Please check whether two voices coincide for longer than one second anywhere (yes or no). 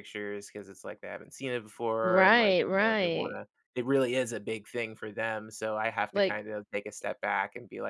yes